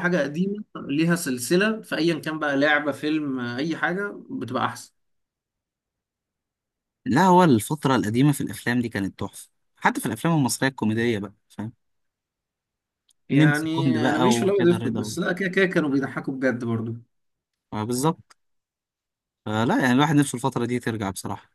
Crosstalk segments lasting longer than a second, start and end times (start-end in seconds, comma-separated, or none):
13.3-15.2